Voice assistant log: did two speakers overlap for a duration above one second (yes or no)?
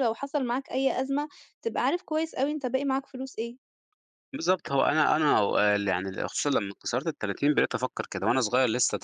no